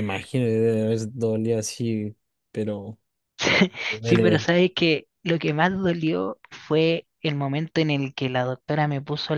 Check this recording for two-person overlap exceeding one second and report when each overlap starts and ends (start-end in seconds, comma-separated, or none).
none